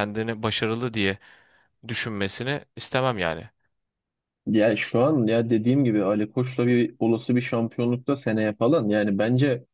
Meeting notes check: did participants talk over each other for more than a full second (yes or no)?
no